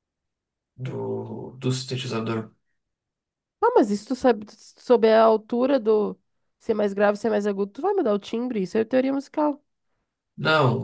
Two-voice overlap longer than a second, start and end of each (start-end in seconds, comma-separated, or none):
none